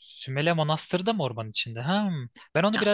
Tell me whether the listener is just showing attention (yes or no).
yes